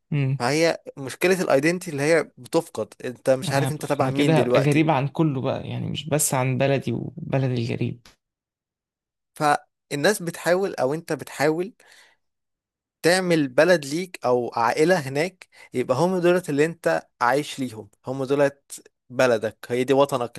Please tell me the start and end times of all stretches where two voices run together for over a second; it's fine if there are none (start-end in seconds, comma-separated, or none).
3.4-4.9